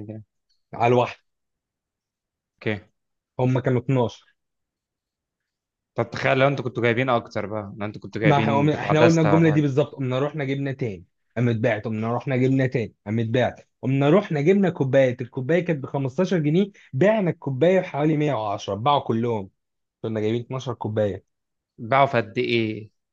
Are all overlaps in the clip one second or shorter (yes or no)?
no